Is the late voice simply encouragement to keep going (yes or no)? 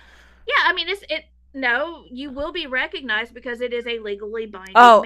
no